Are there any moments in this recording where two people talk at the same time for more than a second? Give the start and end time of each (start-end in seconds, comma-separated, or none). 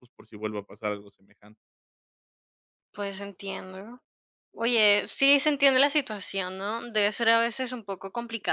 none